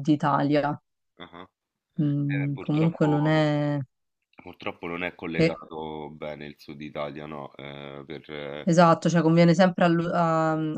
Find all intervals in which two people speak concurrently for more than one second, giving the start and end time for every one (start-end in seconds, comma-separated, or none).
2.2-3.5